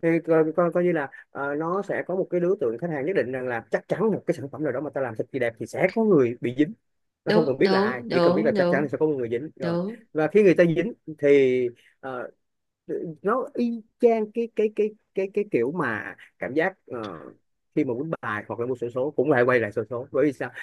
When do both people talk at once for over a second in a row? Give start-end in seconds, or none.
7.2-8.9